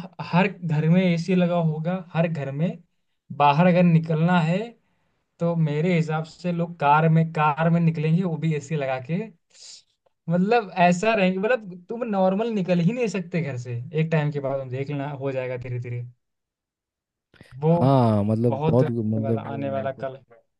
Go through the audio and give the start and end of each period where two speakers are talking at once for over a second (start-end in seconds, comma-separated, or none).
18.5-20.1